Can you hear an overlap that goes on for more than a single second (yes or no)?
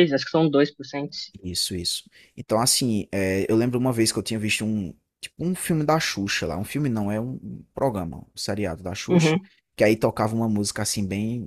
no